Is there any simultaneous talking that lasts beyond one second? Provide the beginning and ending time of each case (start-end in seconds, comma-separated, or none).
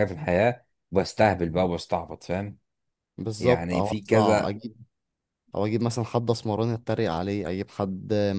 3.4-4.6